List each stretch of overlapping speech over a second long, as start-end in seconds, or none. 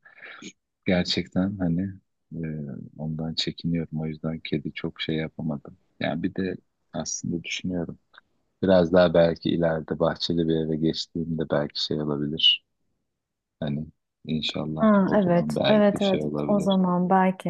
14.8-16.8